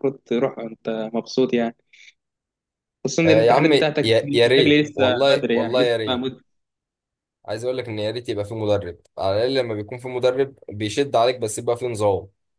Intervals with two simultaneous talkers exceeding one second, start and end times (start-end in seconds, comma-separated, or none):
3.2-6.3